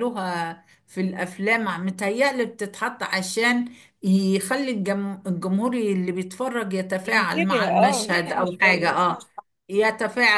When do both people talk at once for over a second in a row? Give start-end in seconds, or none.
7.0-9.2